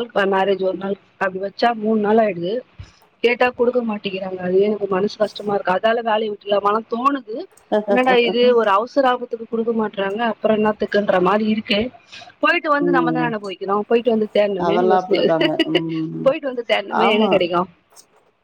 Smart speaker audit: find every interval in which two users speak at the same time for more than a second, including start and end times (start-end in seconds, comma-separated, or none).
14.7-16.3